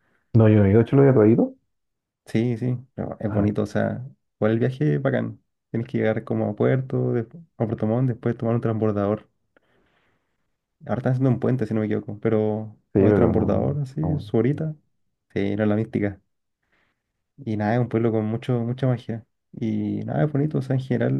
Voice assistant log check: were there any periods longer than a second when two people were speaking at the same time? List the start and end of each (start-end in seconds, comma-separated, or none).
12.9-14.3